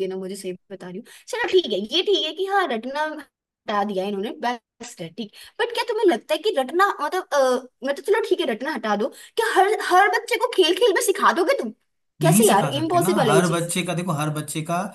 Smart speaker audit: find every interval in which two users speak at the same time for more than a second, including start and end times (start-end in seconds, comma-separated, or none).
12.2-13.7